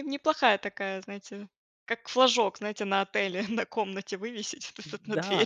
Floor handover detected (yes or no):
yes